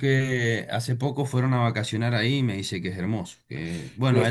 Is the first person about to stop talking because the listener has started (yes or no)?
no